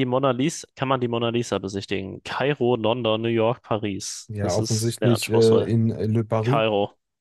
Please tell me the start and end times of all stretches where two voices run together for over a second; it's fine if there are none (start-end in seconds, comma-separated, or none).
4.3-5.7